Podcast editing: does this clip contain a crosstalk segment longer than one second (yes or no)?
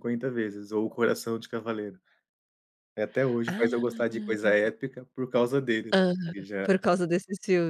yes